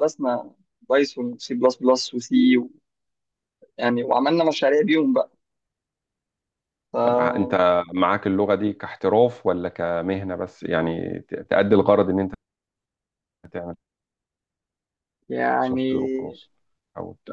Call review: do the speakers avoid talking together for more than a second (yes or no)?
yes